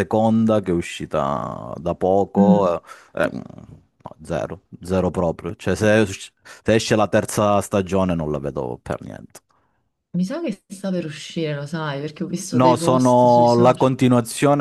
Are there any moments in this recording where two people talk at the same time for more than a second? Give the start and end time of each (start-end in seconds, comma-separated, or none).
12.5-13.9